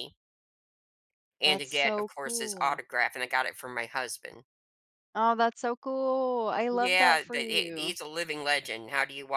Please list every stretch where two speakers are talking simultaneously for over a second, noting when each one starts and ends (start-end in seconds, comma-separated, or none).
1.4-2.8, 6.7-8.0